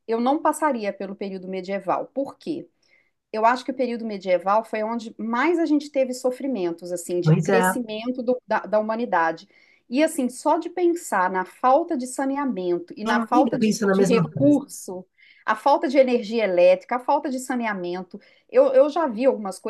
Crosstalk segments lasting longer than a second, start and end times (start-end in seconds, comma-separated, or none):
13.3-14.6